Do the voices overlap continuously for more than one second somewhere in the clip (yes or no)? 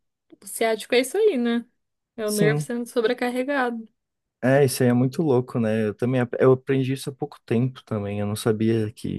no